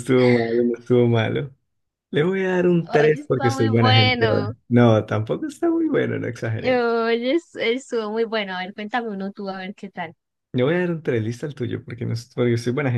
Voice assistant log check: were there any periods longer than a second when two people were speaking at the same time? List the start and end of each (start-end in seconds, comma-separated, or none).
2.9-4.5